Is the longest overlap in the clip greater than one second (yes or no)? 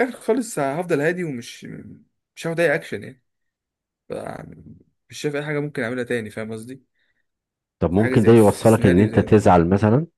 yes